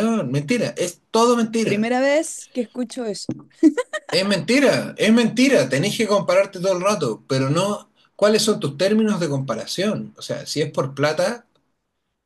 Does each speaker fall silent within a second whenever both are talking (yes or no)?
yes